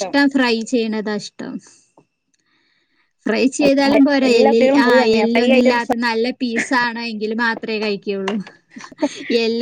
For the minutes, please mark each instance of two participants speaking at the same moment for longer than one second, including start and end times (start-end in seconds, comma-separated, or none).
3.9-5.9